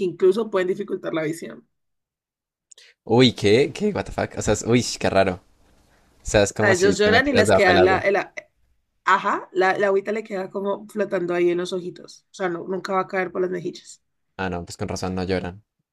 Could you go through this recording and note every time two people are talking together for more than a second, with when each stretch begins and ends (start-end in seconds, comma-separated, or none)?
6.6-8.1